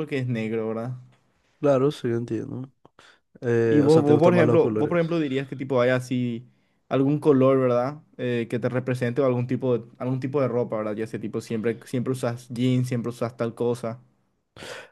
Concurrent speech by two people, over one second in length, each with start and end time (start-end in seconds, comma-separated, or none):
3.6-4.9